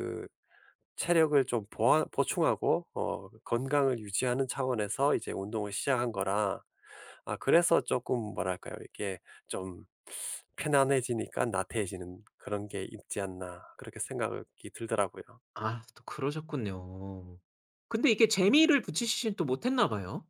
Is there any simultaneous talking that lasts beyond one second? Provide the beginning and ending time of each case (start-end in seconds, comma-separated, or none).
none